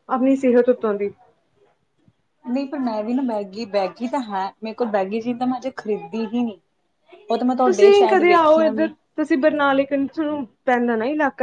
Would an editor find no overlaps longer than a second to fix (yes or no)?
no